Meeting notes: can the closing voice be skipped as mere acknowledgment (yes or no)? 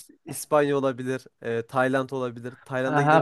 no